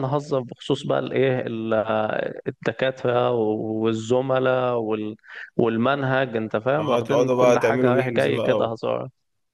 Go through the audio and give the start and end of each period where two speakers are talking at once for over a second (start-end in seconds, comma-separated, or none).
7.0-8.8